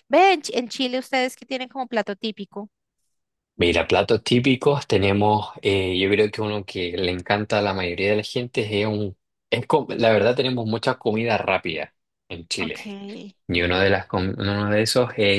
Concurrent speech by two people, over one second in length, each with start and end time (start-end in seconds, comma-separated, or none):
none